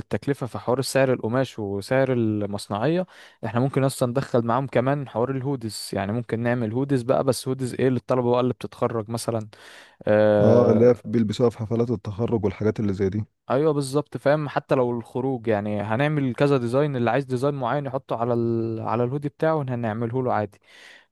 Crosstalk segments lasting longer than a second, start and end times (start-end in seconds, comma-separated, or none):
none